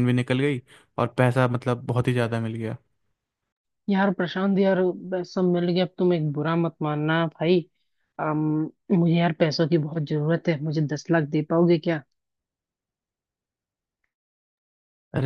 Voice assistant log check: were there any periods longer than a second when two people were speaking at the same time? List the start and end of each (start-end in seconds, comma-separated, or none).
none